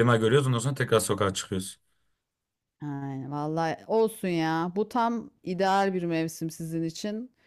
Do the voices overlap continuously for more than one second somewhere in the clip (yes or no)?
no